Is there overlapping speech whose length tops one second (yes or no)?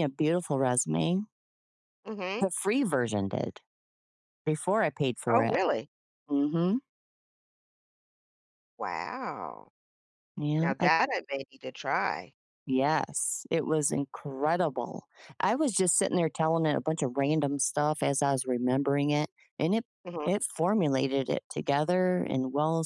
no